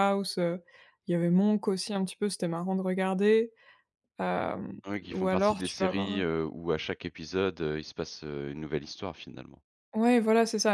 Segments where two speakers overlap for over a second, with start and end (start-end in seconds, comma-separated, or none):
4.9-6.2